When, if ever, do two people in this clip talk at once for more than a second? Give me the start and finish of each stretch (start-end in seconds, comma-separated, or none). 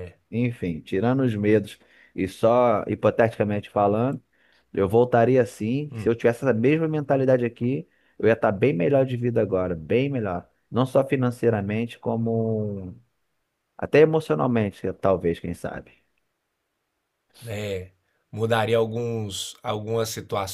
none